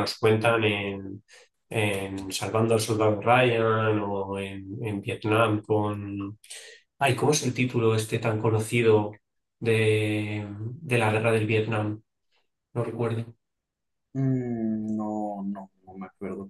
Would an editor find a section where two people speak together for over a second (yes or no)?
no